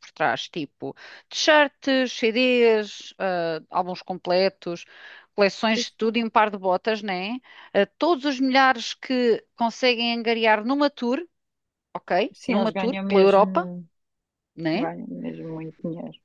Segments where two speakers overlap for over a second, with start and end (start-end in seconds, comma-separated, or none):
12.3-13.7